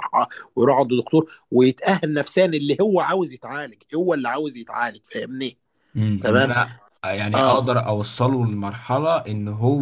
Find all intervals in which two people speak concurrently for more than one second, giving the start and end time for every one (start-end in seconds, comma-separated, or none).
none